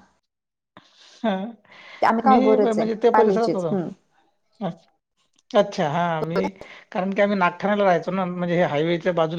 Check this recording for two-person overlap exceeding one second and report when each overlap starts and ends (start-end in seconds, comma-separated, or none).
2.3-3.9